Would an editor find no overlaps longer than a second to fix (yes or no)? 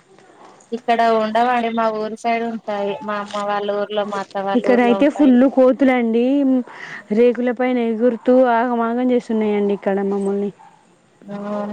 yes